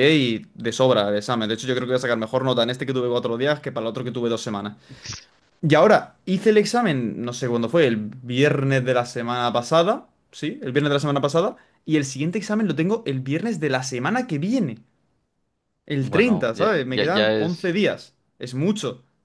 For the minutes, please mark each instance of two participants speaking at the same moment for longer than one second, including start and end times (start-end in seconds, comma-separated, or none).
16.0-17.8